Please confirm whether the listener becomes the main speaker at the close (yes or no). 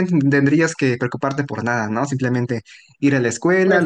no